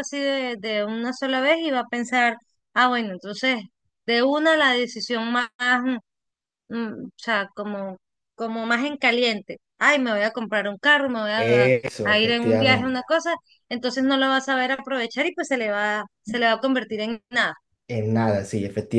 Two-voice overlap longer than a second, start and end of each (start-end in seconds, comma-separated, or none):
11.3-13.0